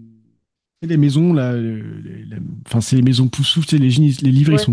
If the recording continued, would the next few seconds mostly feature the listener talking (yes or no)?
no